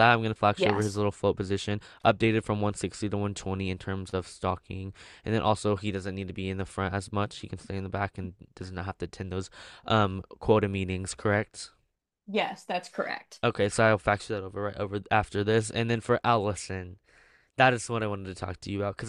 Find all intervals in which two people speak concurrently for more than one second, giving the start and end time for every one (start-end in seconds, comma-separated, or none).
none